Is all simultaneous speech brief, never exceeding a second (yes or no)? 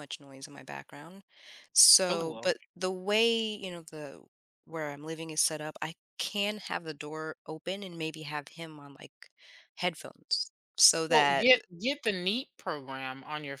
yes